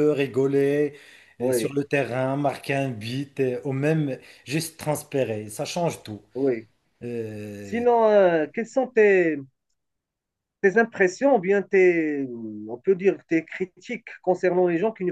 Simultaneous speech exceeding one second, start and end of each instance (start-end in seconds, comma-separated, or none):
none